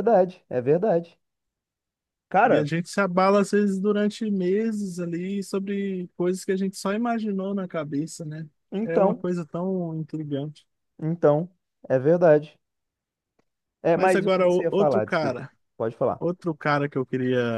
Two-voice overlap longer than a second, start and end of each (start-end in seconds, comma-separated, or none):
13.9-15.4